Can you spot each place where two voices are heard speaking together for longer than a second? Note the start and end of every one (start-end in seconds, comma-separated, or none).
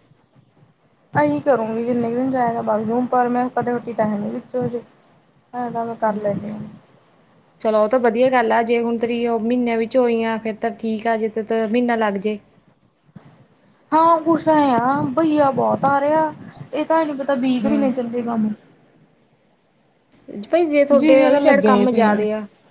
21.0-22.2